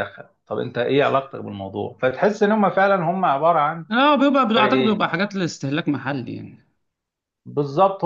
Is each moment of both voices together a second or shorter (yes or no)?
yes